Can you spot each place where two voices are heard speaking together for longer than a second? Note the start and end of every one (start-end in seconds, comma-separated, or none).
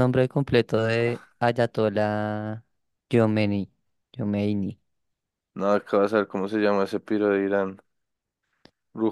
none